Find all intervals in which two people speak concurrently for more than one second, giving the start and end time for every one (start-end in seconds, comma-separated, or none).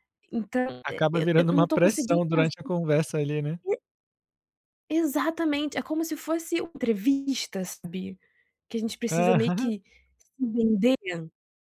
0.8-2.7